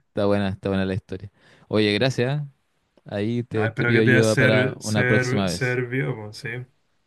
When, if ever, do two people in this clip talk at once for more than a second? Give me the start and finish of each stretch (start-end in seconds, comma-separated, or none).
3.5-5.8